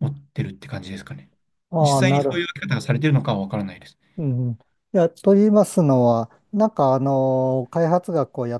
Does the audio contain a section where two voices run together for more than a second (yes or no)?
no